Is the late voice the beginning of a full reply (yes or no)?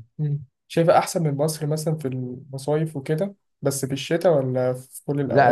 yes